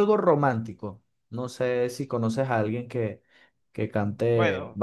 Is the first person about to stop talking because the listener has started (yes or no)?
yes